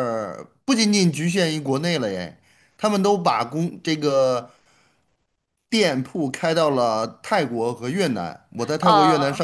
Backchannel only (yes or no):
yes